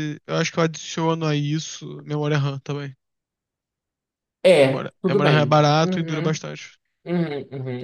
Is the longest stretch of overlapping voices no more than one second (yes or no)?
no